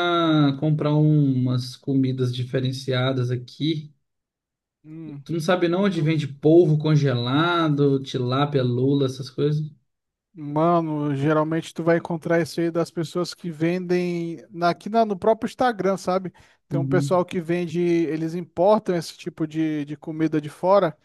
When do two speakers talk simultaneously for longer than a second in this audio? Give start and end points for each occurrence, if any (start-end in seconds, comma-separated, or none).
none